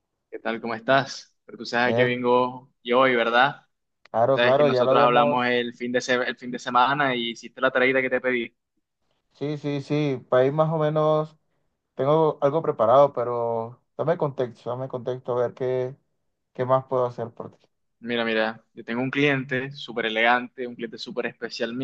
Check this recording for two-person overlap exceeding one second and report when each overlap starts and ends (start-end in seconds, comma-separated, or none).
4.3-5.6